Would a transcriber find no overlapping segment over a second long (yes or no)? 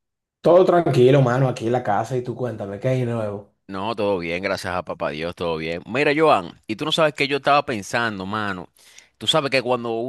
yes